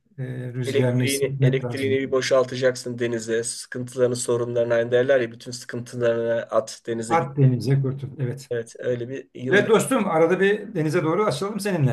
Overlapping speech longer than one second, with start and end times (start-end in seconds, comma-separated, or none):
0.7-2.0